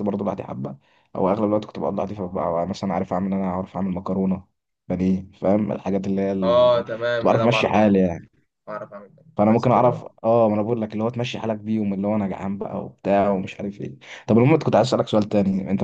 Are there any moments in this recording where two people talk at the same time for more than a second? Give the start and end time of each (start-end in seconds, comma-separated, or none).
6.4-8.0